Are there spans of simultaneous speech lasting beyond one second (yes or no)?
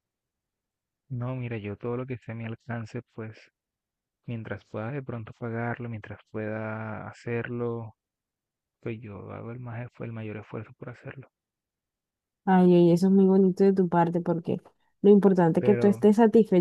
no